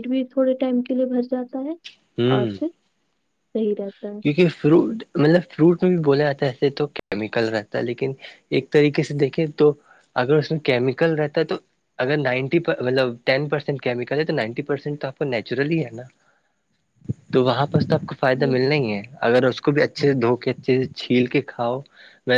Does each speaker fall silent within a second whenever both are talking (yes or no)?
yes